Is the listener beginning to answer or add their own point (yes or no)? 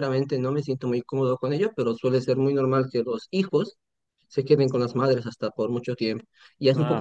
no